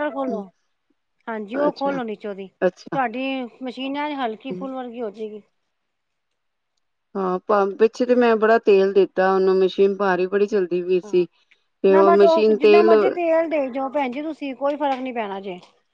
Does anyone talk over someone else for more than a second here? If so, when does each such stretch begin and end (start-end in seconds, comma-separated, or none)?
none